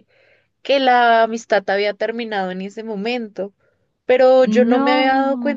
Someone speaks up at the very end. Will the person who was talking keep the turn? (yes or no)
yes